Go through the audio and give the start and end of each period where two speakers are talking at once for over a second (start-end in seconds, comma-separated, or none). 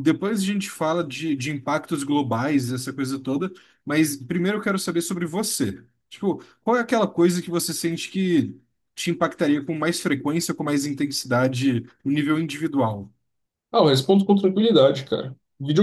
none